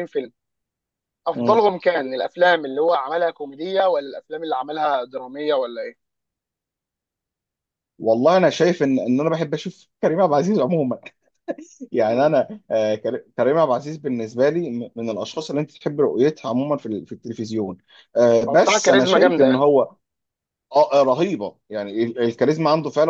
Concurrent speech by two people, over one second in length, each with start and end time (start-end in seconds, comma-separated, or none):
18.4-19.6